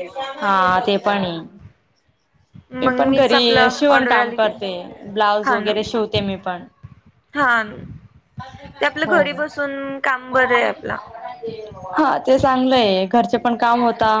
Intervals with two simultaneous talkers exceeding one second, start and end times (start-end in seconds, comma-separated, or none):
2.8-4.5